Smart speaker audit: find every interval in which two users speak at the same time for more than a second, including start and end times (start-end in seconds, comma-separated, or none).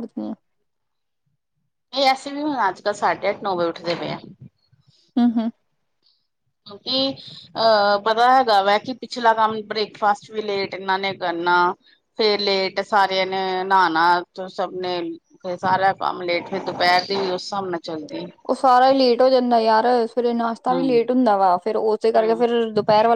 none